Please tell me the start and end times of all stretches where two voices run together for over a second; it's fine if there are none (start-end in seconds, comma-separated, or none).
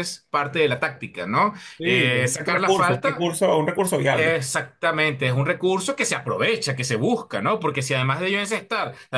1.8-3.2